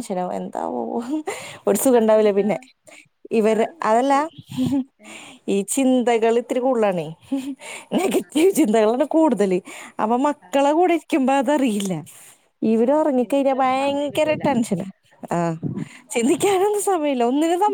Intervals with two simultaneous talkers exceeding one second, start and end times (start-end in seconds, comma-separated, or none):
12.8-14.4